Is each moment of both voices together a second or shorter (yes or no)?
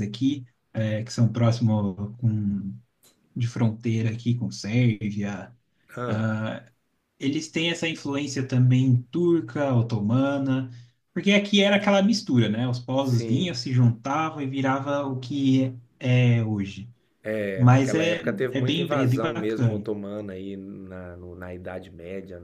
no